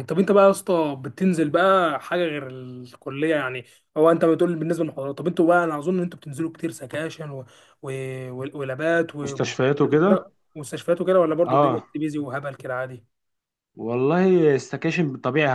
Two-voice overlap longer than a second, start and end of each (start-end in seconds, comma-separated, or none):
none